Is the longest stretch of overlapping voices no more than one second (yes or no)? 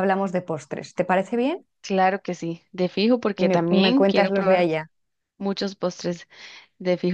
no